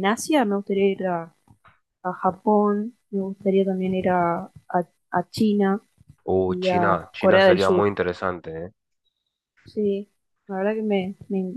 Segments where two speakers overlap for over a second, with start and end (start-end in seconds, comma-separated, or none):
6.5-7.9